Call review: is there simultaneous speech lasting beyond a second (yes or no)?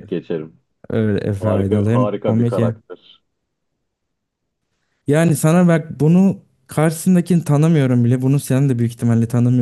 yes